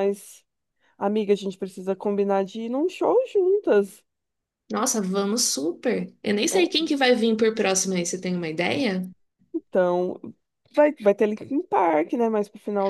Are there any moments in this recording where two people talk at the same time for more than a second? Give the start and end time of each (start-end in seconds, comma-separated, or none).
none